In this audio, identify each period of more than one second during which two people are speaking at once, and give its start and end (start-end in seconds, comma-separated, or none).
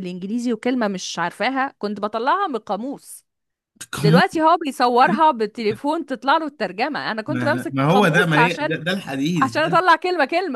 7.3-8.8